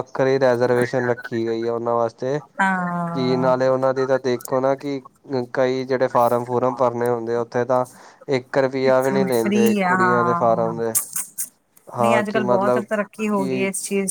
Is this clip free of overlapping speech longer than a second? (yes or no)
no